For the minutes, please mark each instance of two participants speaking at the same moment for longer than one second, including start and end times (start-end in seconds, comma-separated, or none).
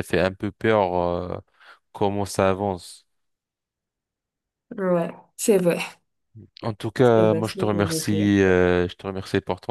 7.0-8.3